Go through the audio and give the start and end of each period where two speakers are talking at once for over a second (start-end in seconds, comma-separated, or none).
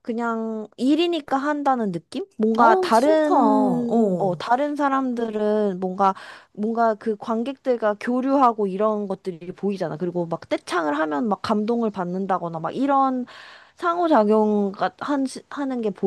2.6-4.4